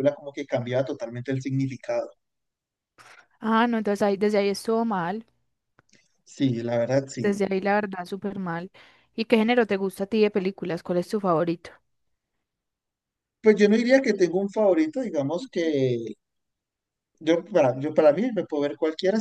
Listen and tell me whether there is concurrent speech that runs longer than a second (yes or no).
no